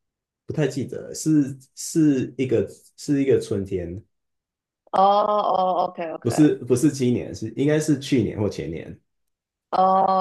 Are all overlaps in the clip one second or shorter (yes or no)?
yes